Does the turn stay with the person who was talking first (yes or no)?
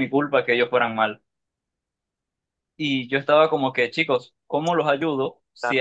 yes